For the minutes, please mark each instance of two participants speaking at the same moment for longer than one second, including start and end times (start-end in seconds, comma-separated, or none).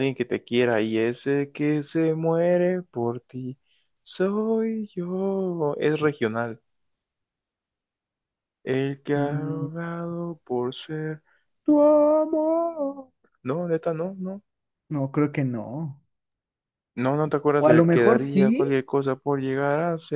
17.6-18.8